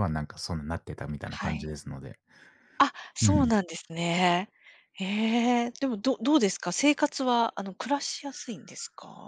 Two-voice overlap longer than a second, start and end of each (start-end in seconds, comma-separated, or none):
none